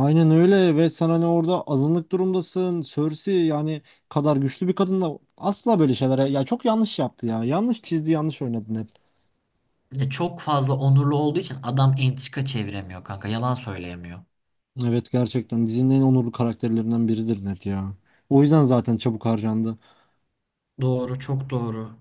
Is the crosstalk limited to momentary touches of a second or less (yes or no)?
yes